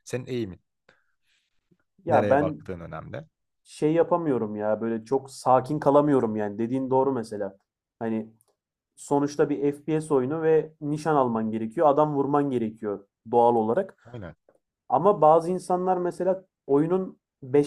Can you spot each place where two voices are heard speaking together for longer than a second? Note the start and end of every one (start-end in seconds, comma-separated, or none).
none